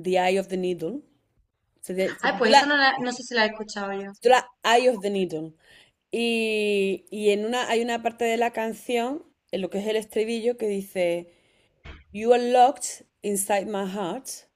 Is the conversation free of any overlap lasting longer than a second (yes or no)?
yes